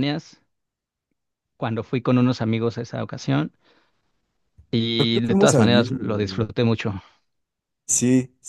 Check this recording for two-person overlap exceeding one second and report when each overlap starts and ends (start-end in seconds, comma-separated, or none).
5.0-6.5